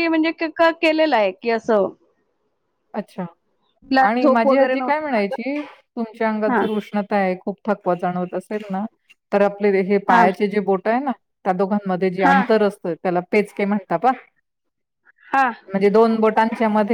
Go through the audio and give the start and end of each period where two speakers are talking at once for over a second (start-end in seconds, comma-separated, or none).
4.1-5.4